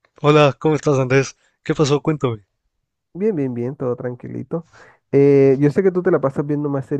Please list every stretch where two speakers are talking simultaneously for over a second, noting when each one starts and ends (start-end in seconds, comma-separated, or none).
none